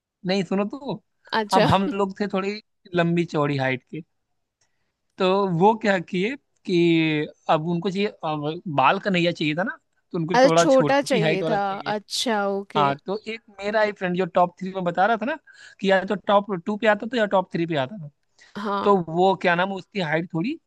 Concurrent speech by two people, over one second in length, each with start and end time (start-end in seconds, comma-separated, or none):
10.3-11.9